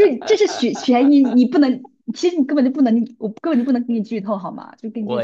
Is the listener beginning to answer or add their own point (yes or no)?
yes